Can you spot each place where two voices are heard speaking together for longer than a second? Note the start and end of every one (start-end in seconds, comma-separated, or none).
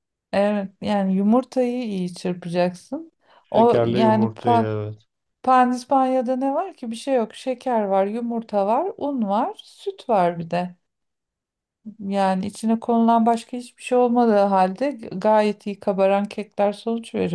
3.5-4.7